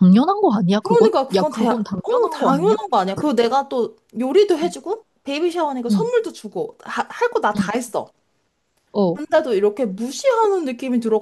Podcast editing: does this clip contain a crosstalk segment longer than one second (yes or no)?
yes